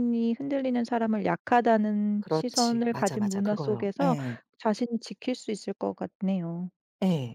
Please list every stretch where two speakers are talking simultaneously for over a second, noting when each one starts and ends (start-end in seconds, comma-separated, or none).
2.2-4.2